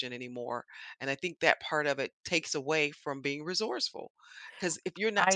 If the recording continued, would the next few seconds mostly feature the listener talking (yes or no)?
no